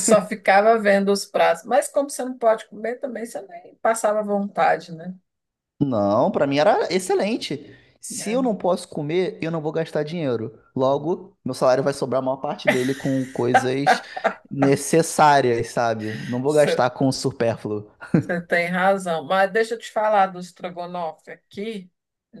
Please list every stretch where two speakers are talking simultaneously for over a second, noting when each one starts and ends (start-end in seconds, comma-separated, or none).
none